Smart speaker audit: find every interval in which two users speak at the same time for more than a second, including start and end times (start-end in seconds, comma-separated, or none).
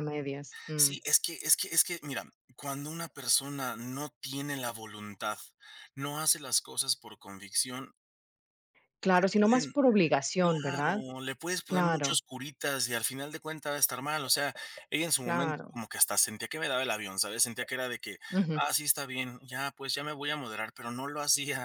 none